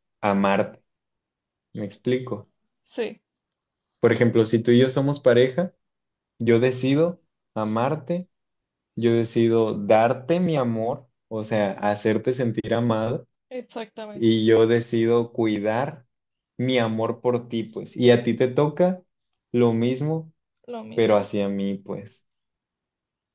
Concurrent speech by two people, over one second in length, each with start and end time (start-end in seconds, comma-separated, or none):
none